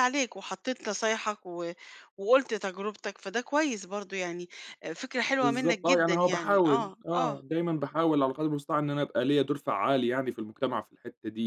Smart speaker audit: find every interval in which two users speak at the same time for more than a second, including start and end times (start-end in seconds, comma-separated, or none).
5.2-7.4